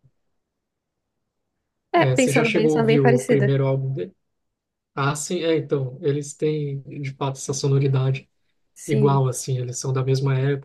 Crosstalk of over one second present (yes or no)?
yes